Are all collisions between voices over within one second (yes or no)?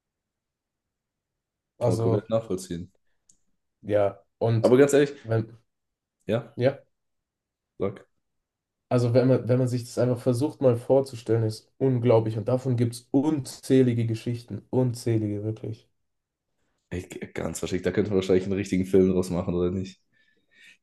yes